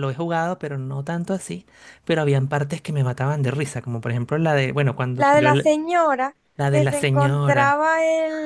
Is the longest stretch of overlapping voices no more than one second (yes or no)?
no